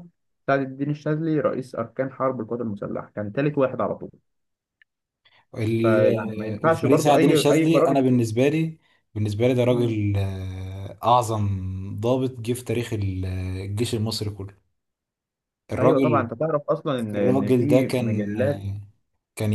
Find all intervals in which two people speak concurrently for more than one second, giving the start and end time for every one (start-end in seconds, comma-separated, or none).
5.8-8.1, 17.1-18.3